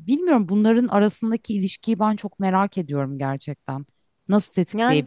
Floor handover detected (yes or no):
no